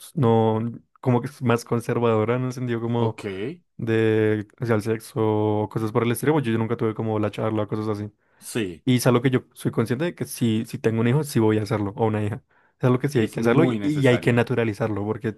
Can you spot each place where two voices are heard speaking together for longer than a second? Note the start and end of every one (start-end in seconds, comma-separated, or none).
13.1-14.4